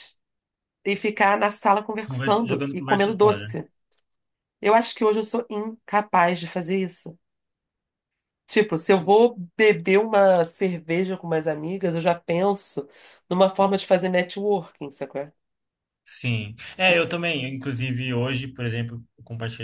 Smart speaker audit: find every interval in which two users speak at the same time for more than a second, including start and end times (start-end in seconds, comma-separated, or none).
2.1-3.5